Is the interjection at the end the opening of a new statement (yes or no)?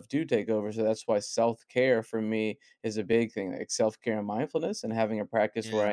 no